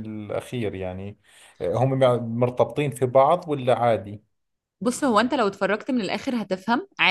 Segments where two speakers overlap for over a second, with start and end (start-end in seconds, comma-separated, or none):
none